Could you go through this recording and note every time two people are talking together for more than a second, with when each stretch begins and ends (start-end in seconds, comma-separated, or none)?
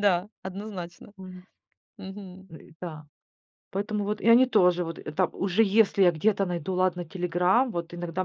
none